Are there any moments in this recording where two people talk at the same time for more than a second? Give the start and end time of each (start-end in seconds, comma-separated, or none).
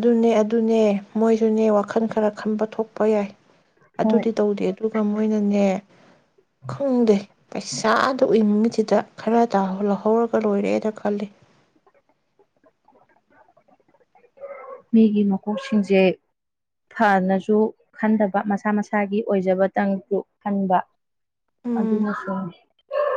none